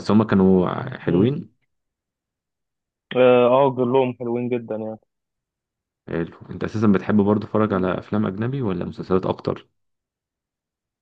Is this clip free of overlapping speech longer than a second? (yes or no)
yes